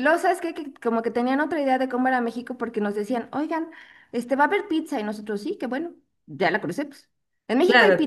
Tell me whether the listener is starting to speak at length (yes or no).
no